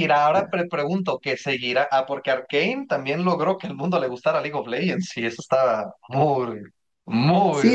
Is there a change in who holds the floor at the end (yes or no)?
yes